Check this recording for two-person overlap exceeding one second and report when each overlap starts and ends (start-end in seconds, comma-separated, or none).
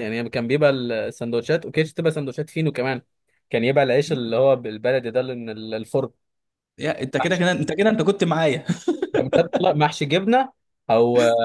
none